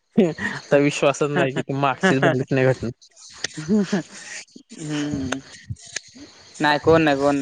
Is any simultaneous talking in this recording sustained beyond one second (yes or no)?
no